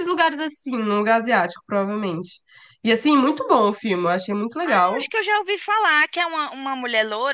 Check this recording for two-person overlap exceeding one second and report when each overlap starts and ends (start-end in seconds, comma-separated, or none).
none